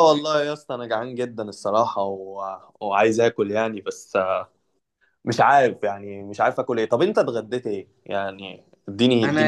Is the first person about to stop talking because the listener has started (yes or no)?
yes